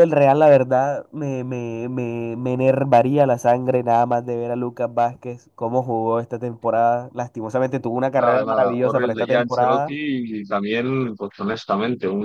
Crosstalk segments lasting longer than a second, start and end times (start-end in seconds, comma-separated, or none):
8.2-9.9